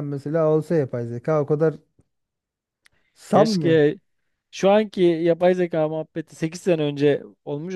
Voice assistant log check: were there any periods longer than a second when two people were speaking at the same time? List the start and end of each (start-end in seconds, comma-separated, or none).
none